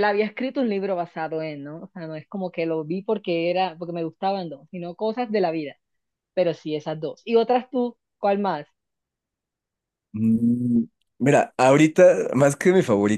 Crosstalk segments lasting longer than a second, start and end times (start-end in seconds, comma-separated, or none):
none